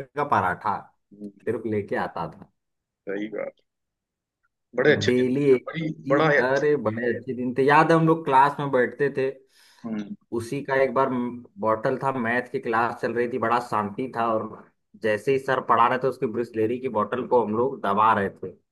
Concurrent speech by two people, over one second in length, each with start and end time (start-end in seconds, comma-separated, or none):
4.8-7.1